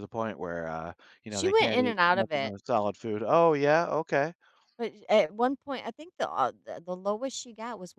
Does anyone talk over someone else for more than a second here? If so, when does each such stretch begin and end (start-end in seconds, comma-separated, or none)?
1.3-2.5